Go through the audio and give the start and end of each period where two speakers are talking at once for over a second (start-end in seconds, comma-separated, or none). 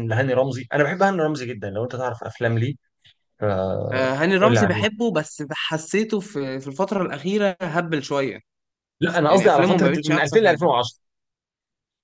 9.3-10.7